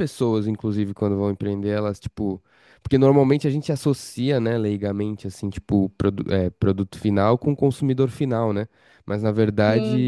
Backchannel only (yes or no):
yes